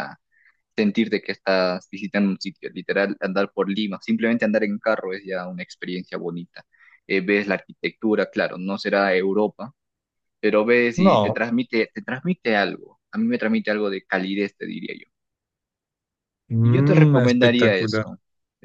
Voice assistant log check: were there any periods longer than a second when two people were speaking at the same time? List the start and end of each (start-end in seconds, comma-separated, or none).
16.6-18.1